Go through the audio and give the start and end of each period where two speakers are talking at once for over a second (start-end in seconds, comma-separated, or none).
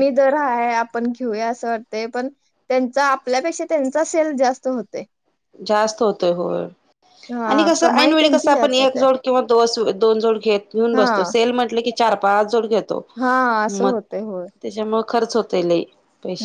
7.5-9.0